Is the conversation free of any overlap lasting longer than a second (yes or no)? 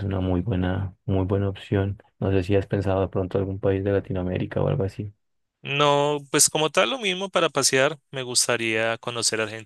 yes